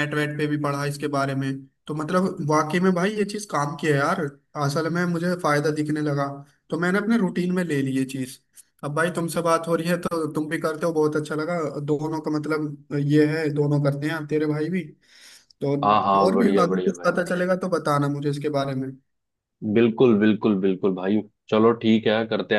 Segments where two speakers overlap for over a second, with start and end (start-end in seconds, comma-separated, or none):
15.8-17.2